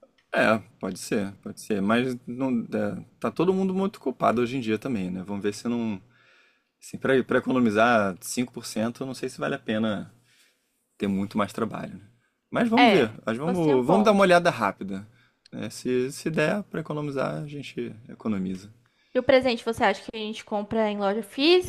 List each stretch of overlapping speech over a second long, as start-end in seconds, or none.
12.8-14.3